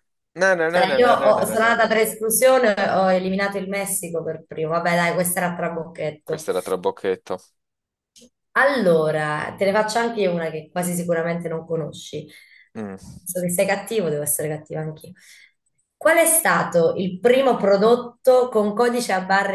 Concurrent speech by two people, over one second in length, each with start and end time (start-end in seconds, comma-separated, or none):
0.7-2.0